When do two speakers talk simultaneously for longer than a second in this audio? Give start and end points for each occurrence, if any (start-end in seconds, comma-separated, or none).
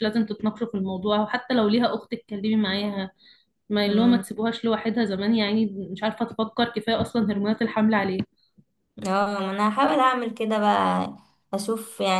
none